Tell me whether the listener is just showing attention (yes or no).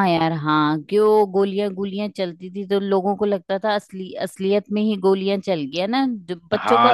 no